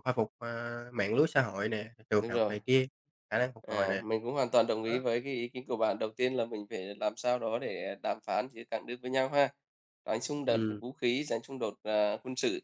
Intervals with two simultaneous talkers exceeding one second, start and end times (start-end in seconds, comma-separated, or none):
none